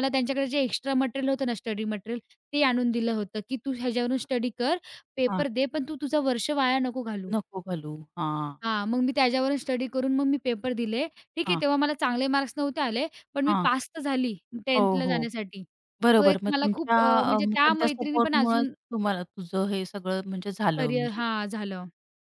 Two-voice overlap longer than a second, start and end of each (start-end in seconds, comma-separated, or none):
16.2-18.7